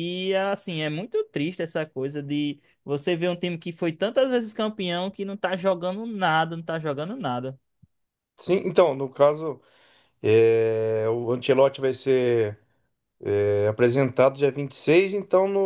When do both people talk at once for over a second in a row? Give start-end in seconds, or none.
none